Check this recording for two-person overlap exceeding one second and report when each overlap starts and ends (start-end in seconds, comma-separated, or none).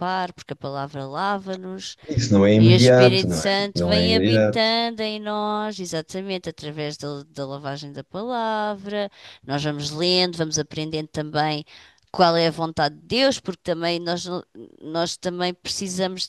2.6-4.8